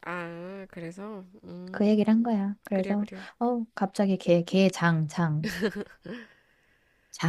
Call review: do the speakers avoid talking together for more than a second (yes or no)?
no